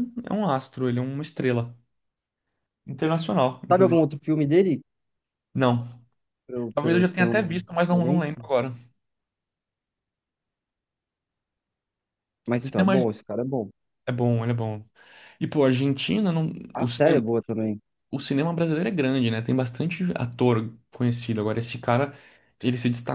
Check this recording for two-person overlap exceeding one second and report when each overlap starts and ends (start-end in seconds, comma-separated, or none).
6.7-8.4